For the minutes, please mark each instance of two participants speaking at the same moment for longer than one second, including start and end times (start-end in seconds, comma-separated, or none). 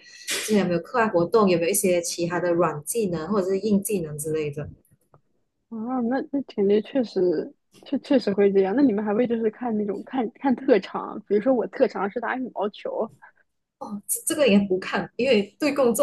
none